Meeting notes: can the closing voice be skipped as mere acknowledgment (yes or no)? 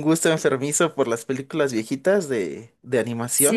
no